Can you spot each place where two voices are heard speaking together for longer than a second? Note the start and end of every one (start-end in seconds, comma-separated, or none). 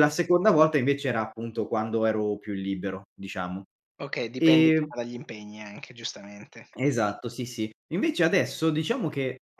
none